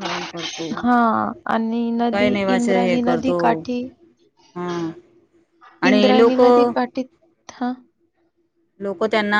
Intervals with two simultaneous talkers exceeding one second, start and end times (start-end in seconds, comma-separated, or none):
0.8-3.4